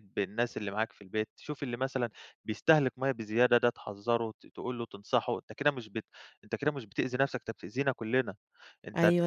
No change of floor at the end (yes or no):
yes